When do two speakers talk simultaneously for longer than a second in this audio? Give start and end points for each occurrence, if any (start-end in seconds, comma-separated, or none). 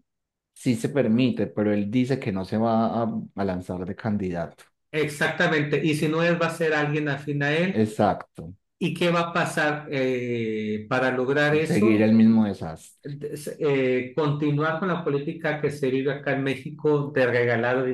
none